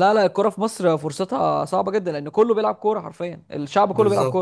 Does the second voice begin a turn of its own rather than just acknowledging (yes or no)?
yes